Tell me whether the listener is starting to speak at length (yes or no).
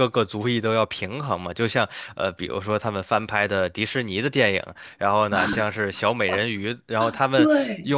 no